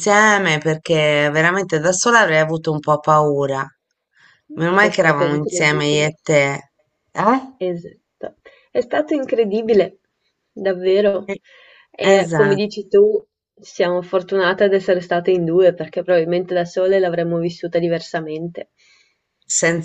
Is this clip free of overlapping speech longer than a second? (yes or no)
no